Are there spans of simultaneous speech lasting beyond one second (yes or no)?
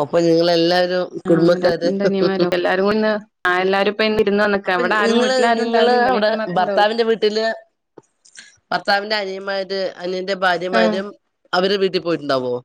yes